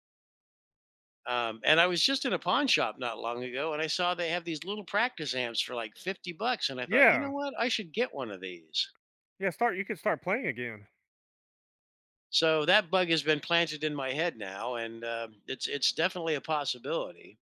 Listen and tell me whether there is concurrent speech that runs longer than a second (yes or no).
no